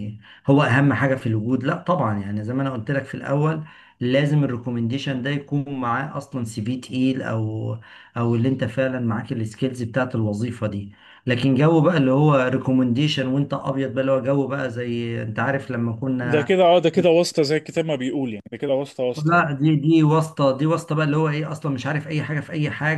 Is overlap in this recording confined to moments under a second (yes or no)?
yes